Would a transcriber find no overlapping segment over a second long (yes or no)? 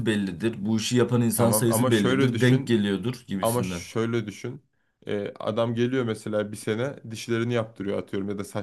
no